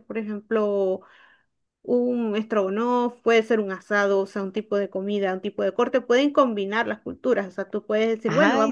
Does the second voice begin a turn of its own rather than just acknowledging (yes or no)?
no